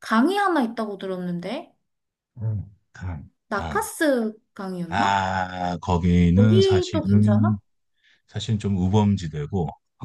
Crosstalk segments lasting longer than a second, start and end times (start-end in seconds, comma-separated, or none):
6.3-7.6